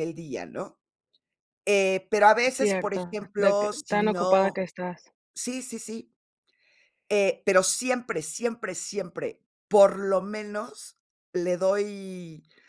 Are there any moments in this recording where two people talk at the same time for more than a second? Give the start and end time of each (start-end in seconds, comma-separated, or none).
2.5-4.6